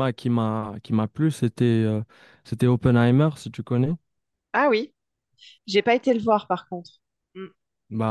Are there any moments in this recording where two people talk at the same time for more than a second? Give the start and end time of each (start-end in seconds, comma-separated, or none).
none